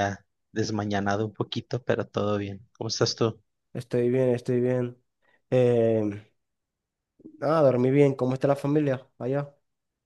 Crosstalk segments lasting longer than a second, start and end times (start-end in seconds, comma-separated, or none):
none